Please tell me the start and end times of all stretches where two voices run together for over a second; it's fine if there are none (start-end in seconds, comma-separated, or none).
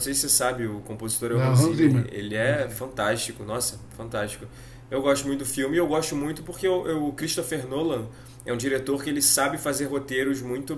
1.3-2.9